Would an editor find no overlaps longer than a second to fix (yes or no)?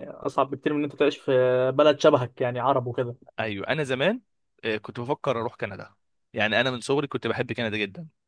yes